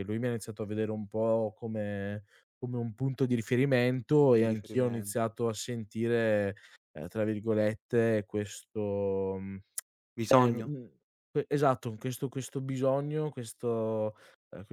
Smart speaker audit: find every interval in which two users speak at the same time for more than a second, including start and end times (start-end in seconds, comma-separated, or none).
4.0-5.2